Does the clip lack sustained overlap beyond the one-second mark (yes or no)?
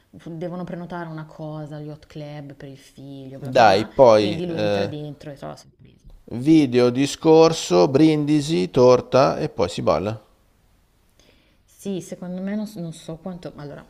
no